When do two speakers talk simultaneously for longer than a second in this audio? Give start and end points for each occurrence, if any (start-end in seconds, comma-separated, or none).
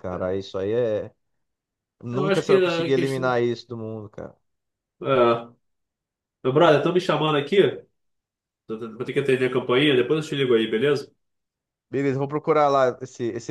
2.1-3.3